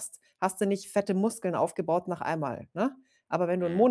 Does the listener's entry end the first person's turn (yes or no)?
no